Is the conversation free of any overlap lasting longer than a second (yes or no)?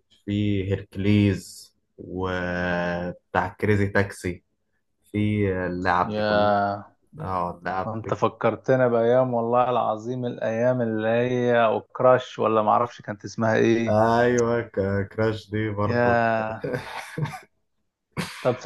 yes